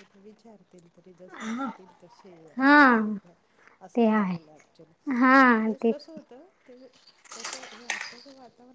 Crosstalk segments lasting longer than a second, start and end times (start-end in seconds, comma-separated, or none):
none